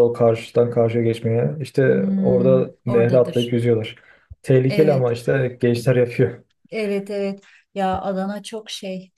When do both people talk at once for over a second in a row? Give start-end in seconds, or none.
1.9-3.6